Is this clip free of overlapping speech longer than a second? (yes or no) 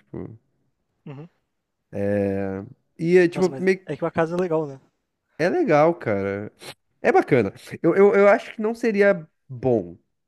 yes